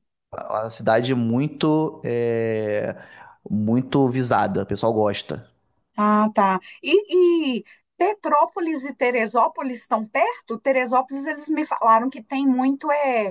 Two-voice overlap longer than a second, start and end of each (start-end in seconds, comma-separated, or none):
none